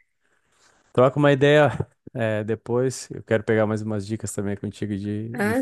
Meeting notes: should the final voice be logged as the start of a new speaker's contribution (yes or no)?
yes